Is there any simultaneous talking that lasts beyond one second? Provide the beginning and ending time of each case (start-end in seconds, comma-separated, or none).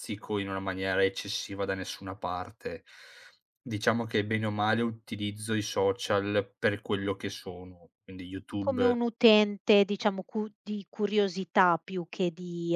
none